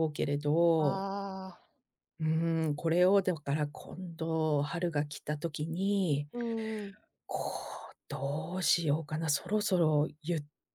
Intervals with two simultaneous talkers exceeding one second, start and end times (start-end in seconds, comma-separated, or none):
none